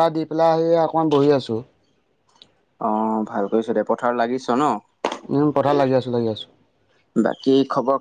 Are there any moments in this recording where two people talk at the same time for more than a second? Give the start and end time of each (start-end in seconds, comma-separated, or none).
none